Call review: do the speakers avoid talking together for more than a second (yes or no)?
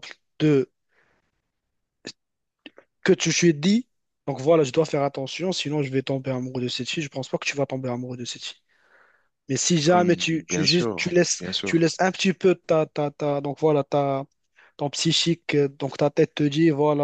no